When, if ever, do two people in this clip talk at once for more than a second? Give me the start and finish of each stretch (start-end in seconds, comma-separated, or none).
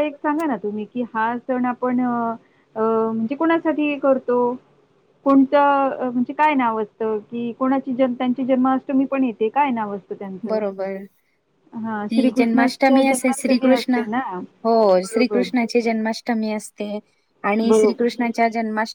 12.1-14.0